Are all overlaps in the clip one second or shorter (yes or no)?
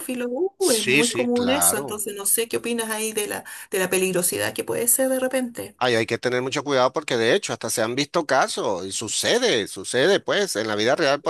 no